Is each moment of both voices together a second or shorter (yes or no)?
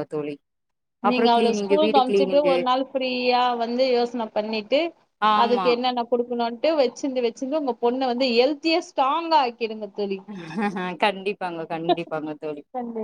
no